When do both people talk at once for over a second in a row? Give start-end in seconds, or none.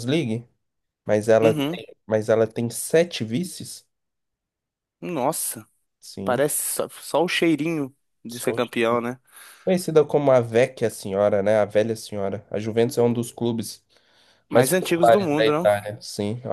14.5-15.7